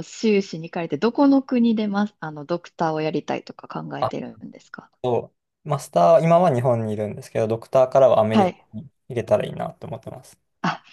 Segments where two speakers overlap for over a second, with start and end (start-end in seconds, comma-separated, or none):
none